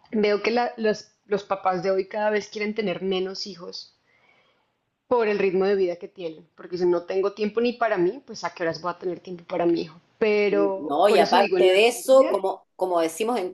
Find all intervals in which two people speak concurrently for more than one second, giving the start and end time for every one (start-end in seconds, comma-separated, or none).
10.5-12.4